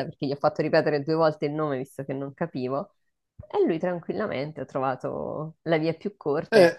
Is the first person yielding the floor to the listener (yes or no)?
yes